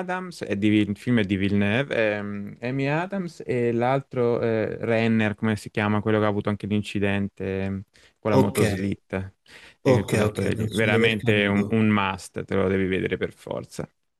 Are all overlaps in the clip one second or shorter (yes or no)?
no